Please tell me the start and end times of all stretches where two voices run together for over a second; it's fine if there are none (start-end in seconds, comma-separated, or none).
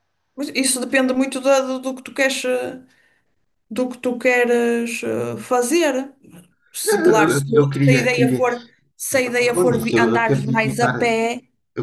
6.8-8.4, 9.5-11.2